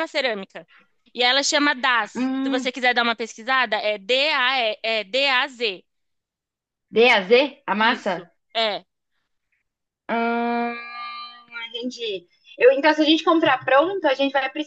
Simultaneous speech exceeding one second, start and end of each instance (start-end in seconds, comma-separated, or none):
none